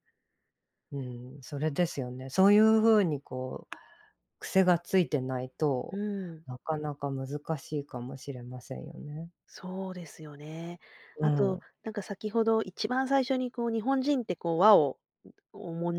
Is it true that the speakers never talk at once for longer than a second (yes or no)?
yes